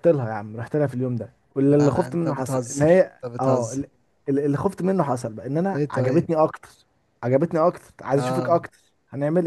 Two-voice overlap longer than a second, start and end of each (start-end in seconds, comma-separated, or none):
1.7-3.8